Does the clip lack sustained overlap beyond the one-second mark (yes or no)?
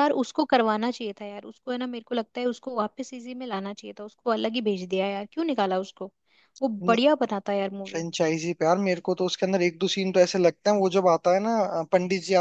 yes